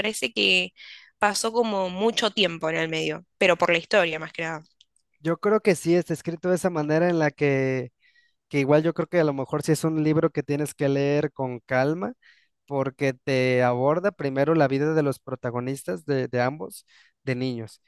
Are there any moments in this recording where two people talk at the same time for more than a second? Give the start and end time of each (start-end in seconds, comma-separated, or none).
none